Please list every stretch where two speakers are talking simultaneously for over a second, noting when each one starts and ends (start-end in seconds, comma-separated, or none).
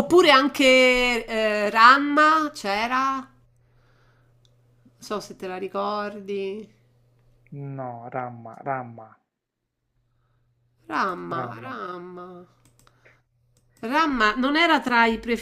none